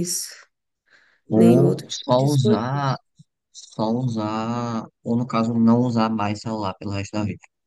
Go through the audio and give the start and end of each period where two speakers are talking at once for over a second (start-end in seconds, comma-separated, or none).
1.3-2.9